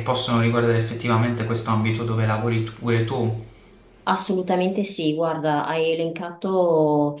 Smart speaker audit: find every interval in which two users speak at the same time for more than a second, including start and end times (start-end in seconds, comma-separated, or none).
none